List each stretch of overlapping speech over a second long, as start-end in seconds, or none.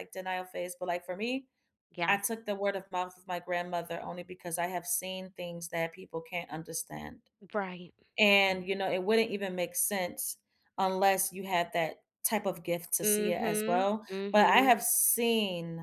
13.0-14.8